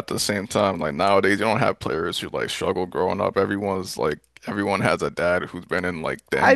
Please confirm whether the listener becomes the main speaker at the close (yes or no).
yes